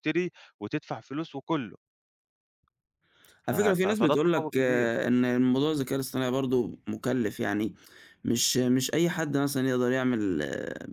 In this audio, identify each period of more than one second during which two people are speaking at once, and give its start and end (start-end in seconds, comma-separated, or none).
3.5-4.9